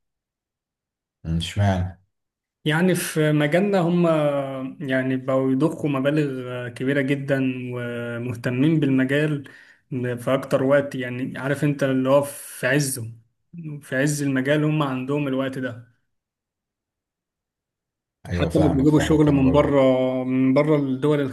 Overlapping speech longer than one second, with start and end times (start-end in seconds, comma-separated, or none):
18.3-19.8